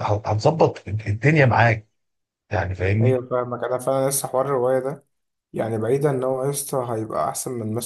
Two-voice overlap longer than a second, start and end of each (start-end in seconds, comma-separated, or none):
none